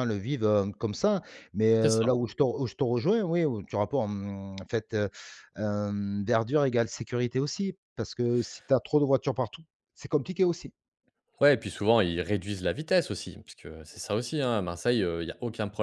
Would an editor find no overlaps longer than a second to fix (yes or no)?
yes